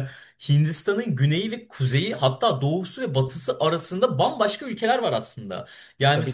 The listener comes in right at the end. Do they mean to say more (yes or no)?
no